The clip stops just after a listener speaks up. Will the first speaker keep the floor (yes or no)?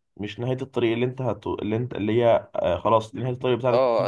no